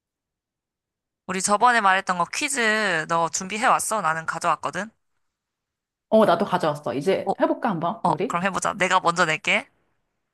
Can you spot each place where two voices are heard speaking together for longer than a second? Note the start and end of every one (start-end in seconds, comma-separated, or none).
none